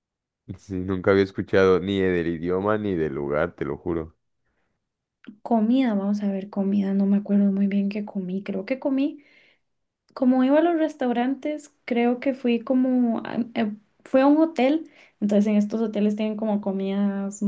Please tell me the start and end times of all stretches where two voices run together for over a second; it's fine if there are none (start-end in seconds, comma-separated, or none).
none